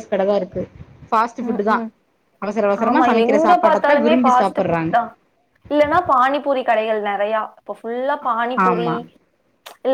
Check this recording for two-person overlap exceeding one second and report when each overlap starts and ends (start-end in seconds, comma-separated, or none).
2.9-4.9